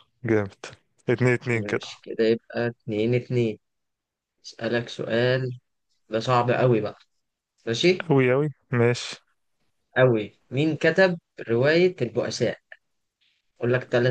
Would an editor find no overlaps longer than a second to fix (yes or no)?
yes